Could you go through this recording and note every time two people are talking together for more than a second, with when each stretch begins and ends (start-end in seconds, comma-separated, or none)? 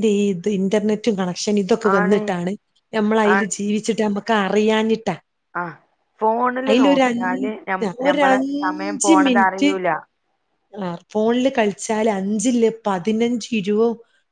7.1-9.7